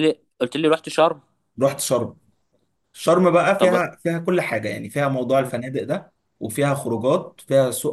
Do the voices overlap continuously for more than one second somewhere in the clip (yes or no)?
no